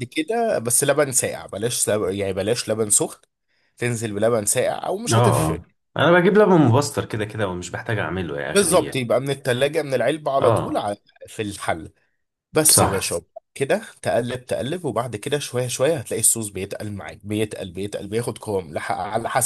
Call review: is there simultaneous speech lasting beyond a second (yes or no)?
no